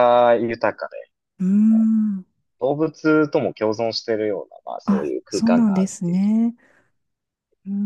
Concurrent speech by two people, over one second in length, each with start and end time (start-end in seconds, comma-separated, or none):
4.9-6.3